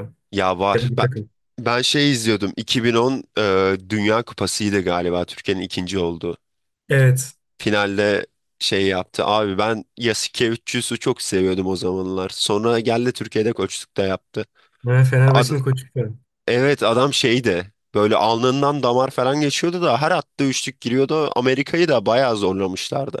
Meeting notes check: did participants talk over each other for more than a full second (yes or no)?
no